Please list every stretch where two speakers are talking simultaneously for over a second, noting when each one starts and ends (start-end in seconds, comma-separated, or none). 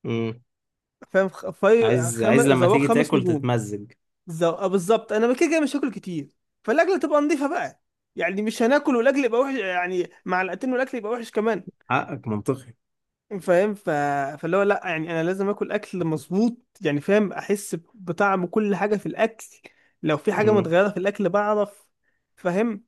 1.8-3.5